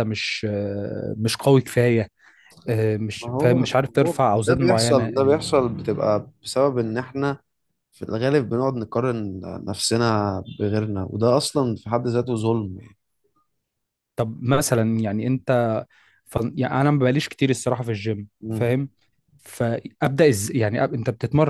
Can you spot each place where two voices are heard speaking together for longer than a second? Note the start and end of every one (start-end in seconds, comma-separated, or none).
3.2-5.3